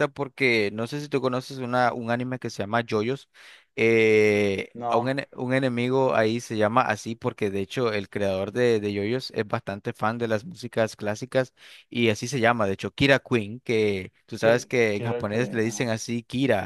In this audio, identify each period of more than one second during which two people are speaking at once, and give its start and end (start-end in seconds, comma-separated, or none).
14.4-15.9